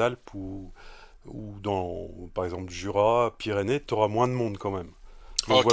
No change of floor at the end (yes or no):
no